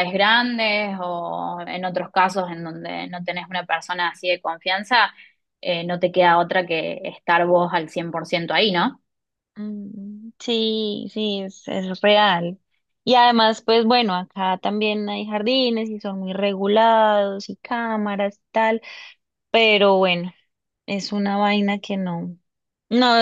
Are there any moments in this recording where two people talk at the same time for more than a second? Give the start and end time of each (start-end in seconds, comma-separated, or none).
none